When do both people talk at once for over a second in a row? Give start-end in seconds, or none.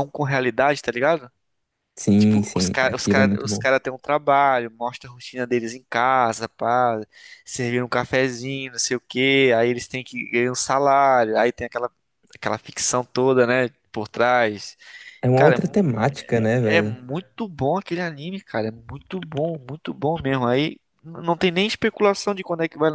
2.2-3.6